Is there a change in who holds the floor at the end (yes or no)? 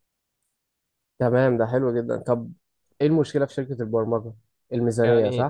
yes